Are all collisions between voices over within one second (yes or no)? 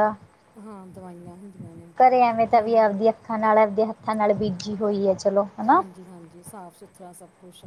yes